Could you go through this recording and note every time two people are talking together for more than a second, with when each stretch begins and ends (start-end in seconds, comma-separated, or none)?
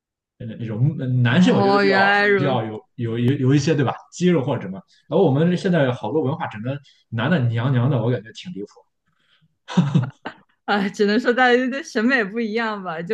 1.3-2.6